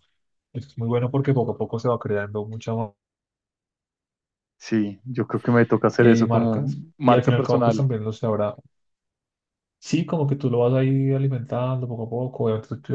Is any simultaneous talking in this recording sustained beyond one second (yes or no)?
yes